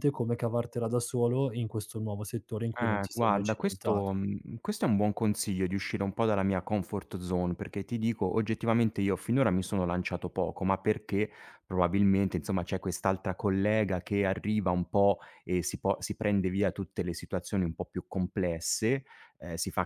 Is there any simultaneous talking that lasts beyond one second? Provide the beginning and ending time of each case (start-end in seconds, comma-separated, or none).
2.8-4.1